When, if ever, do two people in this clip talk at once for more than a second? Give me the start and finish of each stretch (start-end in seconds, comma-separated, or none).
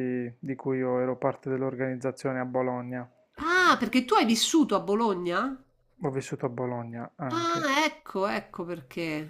none